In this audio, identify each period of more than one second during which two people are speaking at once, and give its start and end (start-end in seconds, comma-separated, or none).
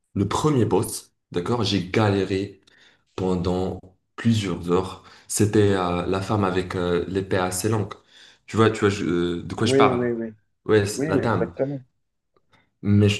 none